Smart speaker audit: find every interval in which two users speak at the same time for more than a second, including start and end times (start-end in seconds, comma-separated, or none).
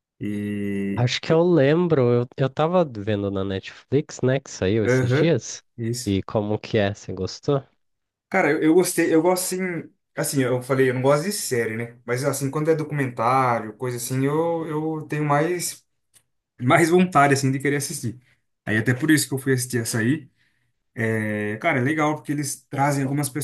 none